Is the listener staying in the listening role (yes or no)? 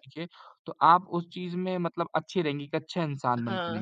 no